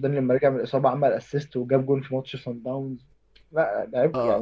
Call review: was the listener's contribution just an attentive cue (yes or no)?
no